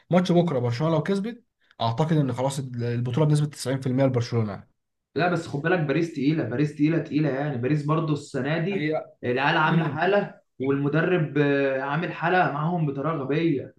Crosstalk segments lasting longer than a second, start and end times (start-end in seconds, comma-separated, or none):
none